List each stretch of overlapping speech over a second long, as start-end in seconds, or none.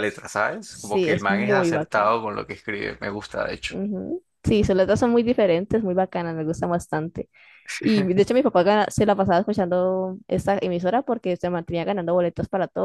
0.7-2.1